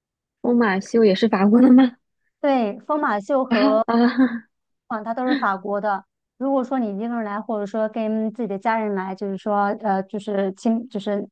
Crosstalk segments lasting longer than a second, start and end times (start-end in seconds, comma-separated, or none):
none